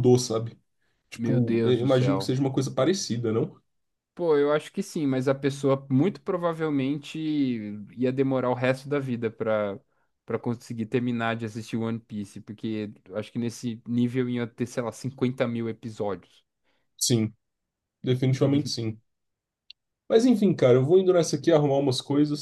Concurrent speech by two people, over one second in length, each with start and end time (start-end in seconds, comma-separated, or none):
1.1-2.3